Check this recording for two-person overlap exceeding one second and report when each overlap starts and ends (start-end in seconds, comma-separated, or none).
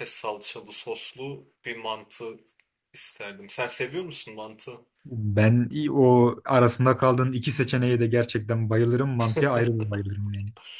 none